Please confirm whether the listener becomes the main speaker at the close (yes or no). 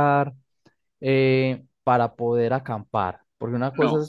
no